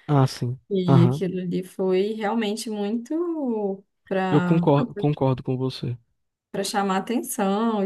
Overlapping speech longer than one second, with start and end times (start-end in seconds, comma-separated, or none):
none